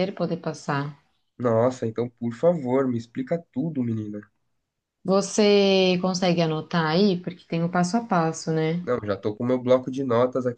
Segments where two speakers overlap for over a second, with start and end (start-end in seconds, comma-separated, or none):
none